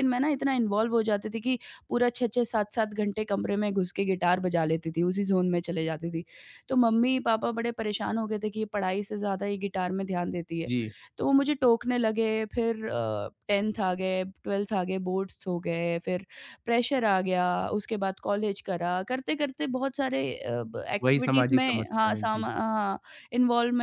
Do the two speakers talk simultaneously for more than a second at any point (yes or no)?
yes